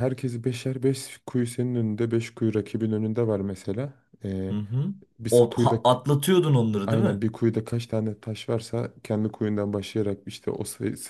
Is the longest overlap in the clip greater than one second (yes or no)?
no